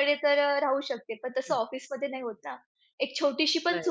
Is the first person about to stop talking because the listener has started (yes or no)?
no